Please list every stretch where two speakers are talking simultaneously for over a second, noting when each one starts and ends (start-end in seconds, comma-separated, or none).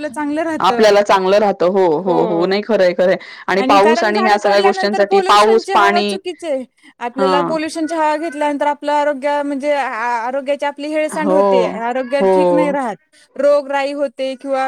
3.7-6.2